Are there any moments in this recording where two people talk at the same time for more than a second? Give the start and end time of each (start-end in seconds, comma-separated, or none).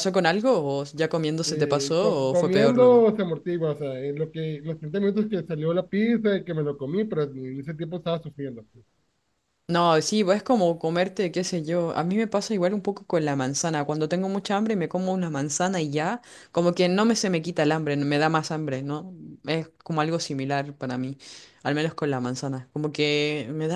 1.4-3.1